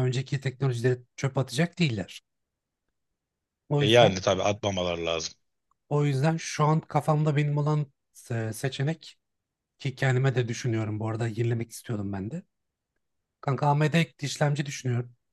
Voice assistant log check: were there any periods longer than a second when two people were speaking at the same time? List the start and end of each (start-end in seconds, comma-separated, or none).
none